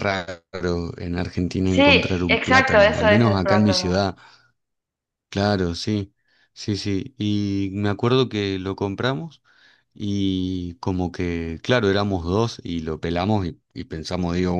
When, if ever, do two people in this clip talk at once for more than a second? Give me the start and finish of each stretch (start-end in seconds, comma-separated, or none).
1.6-4.0